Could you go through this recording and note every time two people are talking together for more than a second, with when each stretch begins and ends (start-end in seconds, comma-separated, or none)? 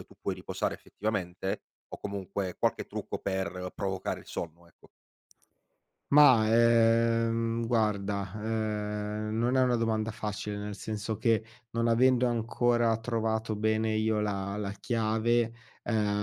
none